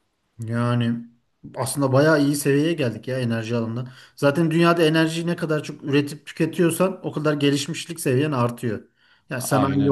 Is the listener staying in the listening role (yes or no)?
yes